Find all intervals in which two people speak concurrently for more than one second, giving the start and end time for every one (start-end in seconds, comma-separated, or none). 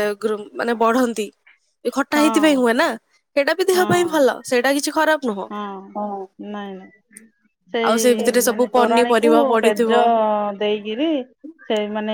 7.9-9.9